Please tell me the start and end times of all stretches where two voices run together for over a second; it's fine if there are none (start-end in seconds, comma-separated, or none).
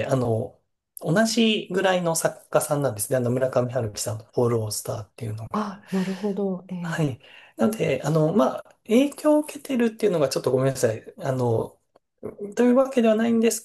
none